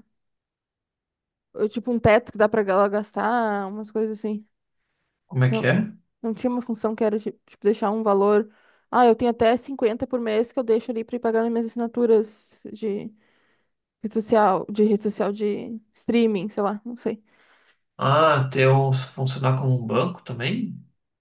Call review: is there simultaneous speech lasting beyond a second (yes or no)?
no